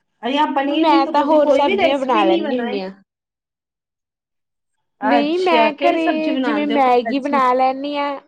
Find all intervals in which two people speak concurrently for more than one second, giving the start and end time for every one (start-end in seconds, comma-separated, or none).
0.8-2.8, 5.2-7.4